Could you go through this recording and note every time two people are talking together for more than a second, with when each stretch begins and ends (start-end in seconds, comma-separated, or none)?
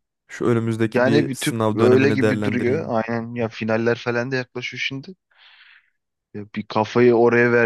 0.9-2.9